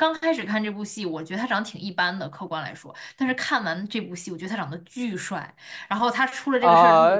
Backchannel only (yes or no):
no